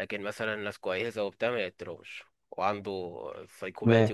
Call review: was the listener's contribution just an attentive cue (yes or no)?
yes